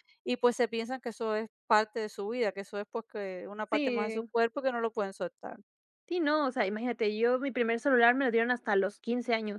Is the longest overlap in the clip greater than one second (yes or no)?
no